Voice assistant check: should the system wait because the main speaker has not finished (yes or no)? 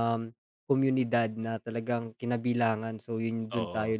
yes